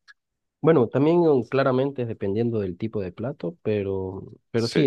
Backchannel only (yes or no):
yes